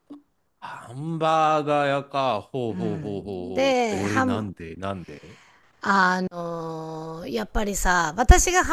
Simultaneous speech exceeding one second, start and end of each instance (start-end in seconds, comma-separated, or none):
2.7-4.5